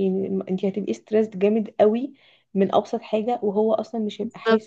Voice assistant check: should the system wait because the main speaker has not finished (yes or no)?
no